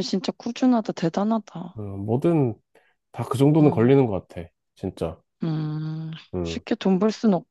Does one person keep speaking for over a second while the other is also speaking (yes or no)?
no